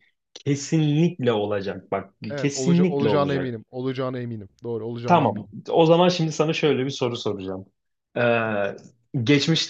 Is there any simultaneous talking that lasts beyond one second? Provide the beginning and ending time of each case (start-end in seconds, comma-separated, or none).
2.3-3.6